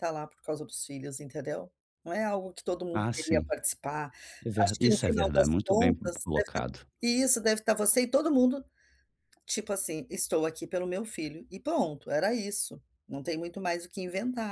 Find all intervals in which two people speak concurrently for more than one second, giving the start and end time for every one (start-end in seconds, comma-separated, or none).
4.6-6.6